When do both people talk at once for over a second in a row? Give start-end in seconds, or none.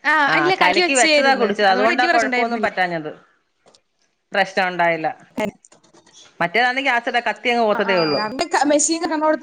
0.9-2.7